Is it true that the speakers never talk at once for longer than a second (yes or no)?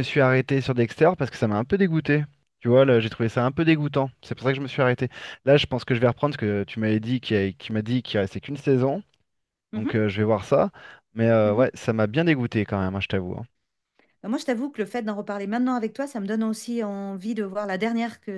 yes